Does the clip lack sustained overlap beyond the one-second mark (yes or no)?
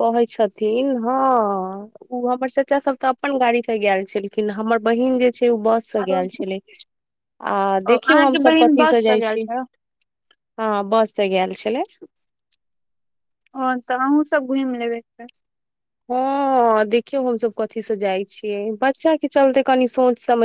no